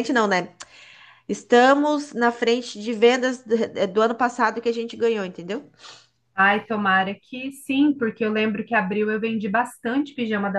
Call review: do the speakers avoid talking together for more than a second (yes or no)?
yes